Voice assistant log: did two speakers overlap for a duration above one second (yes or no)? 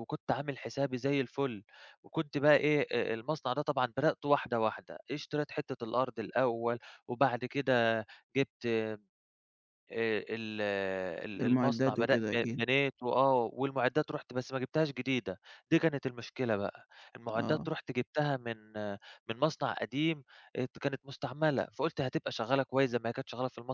yes